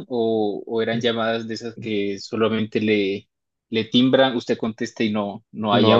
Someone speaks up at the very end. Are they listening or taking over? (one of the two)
taking over